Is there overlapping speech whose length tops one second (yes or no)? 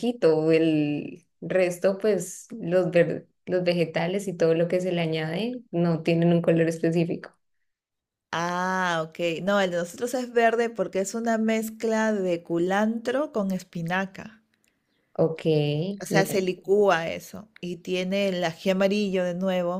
no